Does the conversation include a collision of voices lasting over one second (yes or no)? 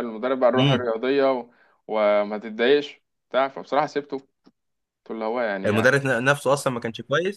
no